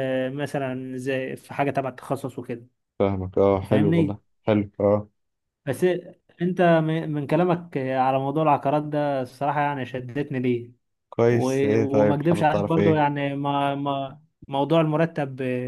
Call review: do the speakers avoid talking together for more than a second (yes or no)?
no